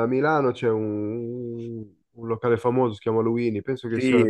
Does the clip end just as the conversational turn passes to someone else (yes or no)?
yes